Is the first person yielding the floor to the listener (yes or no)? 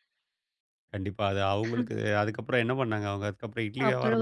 yes